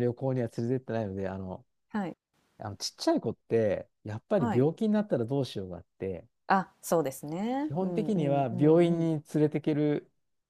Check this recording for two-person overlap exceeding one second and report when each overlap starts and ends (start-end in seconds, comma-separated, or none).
7.7-9.1